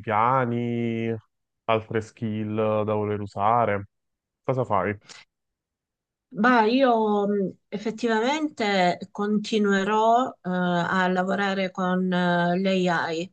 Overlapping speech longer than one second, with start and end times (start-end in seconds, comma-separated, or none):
none